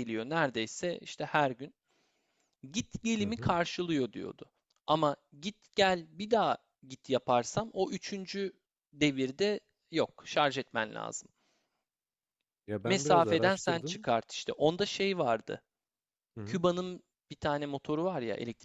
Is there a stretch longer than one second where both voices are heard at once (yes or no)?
yes